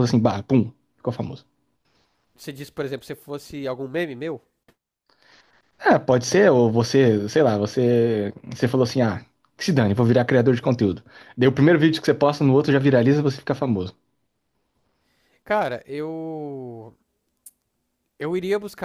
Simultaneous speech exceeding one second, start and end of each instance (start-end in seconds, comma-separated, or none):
none